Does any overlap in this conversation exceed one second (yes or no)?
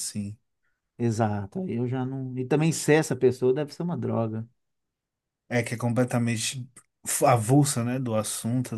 no